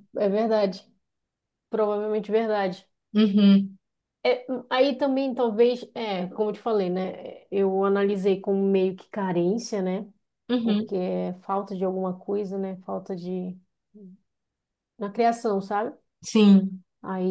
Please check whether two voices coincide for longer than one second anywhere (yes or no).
no